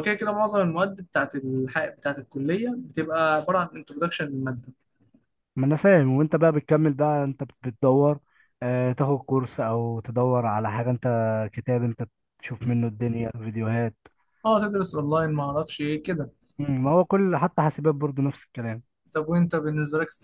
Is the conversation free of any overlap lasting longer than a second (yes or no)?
yes